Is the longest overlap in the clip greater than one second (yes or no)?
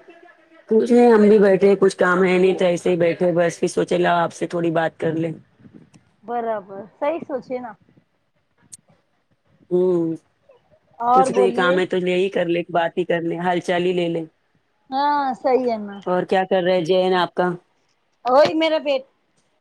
no